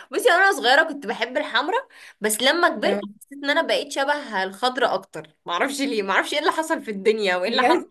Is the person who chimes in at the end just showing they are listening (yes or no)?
no